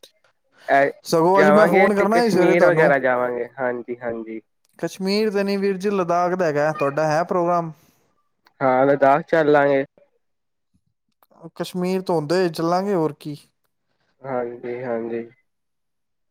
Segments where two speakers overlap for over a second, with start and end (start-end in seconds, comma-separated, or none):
1.4-2.9